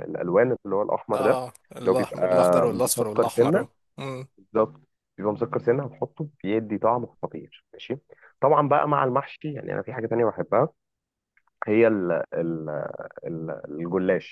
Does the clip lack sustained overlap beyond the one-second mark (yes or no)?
no